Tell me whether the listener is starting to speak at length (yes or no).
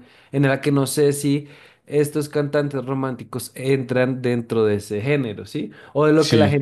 no